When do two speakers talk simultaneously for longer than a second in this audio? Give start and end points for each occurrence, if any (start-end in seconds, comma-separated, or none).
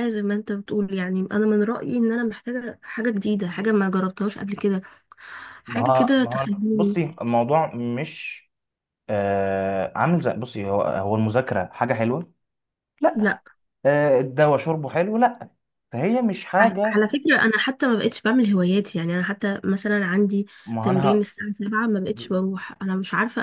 5.7-7.0